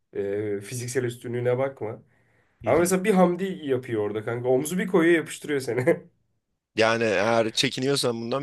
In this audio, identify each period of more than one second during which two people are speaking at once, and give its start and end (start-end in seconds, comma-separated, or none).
none